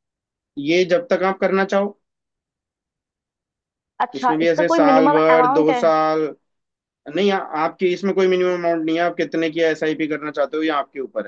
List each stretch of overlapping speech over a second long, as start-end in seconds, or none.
4.2-5.8